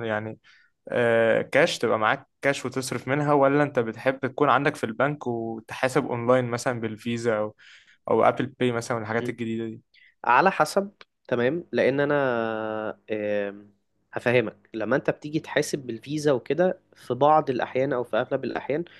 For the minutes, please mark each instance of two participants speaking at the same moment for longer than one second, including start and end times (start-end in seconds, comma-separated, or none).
none